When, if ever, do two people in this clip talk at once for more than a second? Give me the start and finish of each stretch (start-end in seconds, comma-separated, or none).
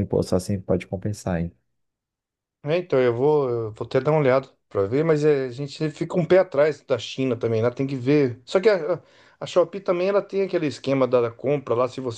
none